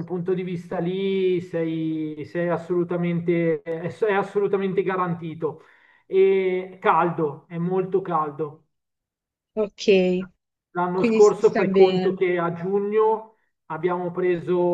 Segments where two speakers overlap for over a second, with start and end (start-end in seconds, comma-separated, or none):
11.0-12.2